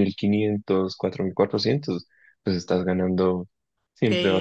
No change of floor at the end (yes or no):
no